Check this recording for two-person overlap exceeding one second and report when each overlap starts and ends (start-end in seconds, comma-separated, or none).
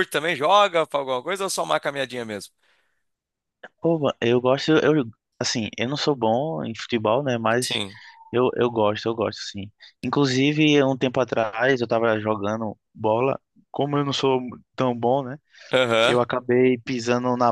none